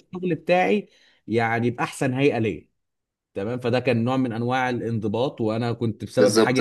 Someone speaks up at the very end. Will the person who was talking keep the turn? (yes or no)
yes